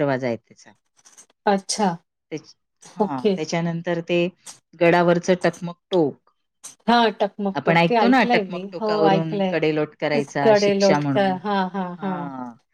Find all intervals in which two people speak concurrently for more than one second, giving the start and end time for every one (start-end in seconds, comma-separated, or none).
7.6-9.6